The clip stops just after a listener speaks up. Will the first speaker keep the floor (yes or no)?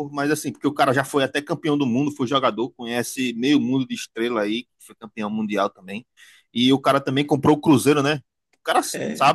yes